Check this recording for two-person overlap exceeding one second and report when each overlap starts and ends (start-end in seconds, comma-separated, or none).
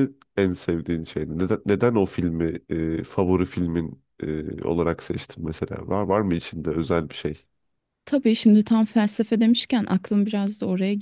none